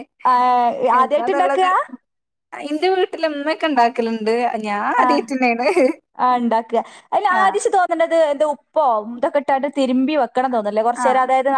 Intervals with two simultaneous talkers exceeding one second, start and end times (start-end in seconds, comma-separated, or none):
none